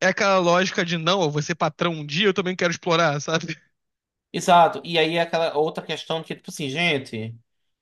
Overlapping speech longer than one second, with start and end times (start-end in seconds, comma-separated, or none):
none